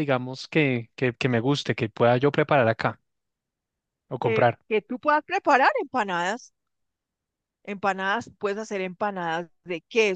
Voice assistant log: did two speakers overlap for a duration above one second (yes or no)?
no